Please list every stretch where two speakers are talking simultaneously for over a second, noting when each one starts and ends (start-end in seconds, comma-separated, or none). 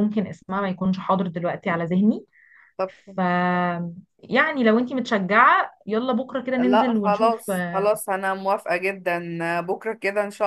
6.6-7.9